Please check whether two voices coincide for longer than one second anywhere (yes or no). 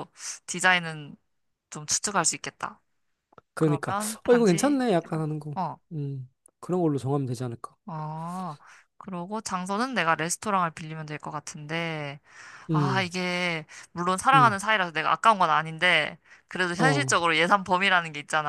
yes